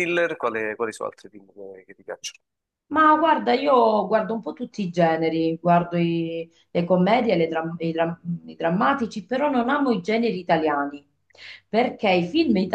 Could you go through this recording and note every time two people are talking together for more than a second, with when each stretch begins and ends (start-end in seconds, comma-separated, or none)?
none